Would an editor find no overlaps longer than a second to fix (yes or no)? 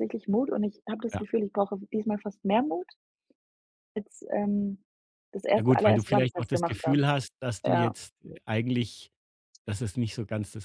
no